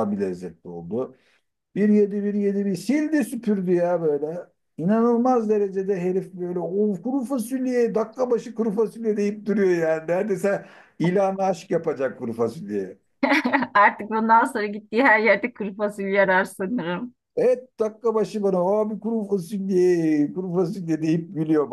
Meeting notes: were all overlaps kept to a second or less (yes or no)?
yes